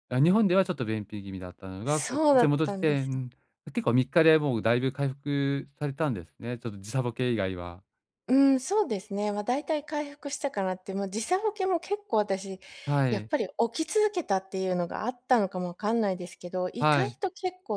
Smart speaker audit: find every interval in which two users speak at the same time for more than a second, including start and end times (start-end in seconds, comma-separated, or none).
1.9-3.1